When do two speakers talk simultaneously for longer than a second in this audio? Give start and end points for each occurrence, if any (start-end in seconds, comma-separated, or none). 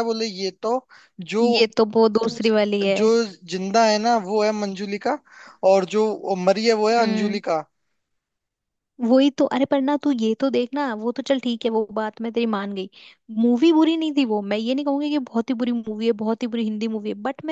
none